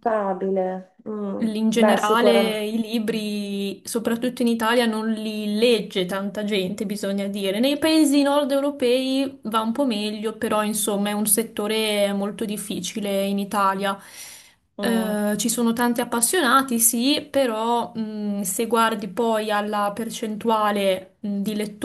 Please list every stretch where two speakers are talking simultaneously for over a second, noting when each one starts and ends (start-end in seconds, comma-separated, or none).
1.4-2.6